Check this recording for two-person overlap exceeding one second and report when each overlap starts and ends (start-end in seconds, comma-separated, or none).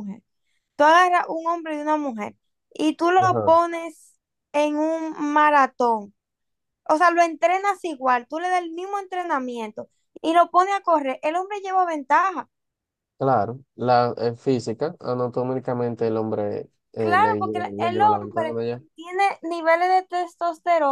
17.0-18.8